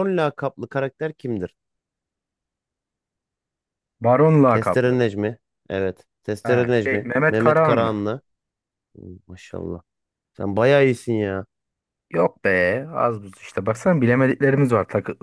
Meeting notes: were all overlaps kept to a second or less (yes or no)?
no